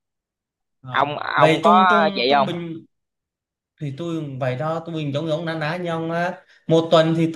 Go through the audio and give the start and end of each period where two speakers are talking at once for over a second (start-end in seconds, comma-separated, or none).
0.9-2.5